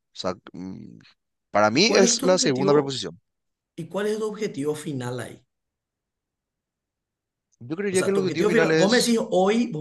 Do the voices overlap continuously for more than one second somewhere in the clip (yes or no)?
yes